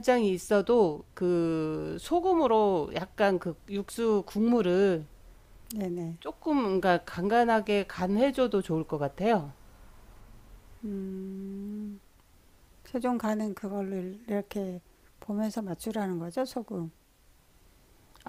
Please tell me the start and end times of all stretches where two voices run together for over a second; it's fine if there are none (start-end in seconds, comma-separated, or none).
none